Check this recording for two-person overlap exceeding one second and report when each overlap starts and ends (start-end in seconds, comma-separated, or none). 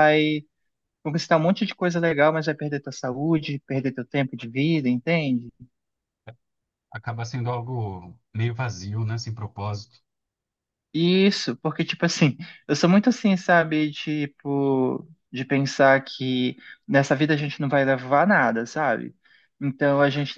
none